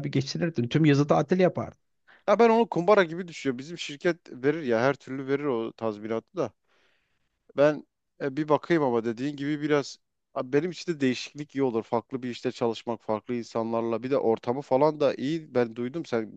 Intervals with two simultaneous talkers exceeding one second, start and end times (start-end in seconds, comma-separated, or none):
none